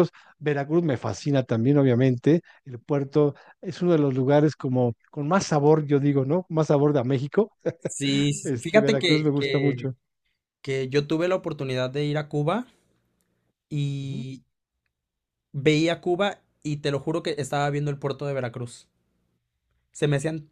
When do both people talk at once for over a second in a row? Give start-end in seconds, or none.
8.4-9.8